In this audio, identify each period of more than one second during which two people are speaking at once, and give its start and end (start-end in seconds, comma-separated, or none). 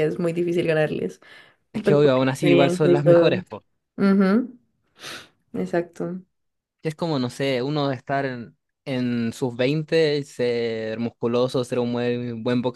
1.7-3.5